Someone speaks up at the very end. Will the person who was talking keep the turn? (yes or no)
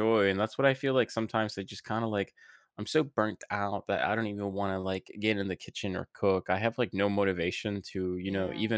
yes